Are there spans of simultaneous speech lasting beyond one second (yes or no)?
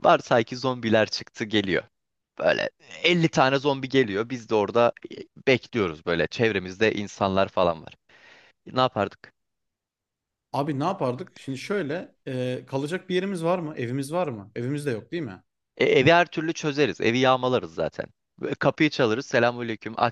no